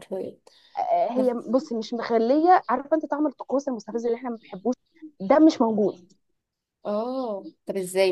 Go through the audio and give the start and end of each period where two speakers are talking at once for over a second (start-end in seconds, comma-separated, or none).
none